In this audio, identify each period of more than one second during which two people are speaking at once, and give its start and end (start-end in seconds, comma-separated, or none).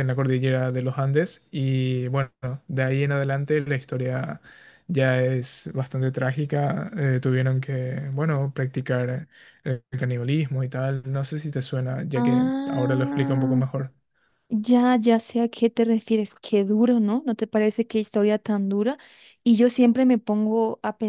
12.1-13.6